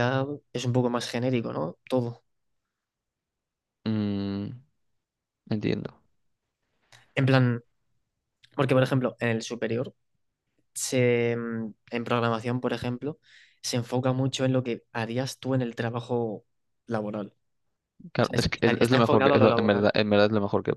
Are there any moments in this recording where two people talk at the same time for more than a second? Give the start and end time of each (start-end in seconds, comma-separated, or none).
18.2-19.9